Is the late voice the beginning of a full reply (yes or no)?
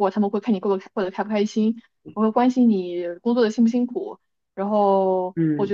no